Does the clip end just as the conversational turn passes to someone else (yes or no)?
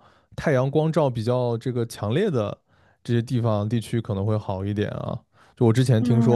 no